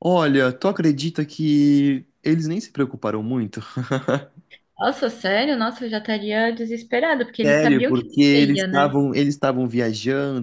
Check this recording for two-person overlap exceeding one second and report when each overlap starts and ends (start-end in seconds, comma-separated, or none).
7.4-8.9